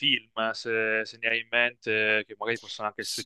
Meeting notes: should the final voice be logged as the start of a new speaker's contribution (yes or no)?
no